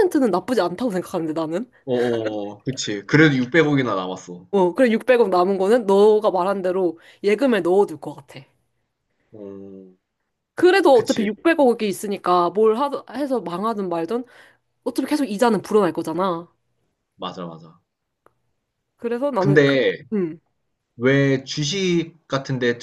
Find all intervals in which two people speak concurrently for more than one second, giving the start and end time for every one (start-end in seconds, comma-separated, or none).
none